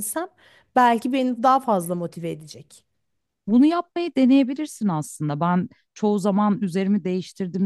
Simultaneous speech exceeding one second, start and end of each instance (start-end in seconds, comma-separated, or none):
none